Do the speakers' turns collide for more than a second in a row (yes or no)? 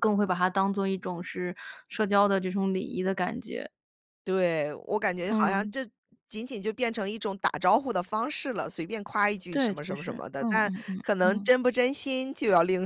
yes